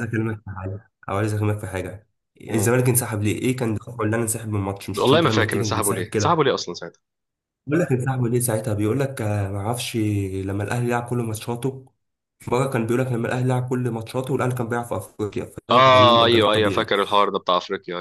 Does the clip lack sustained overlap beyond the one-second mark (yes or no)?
no